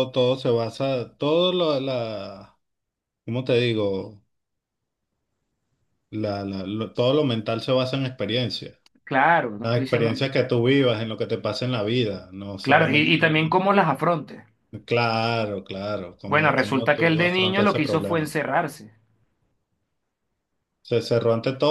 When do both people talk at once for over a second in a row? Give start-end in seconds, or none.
16.2-18.4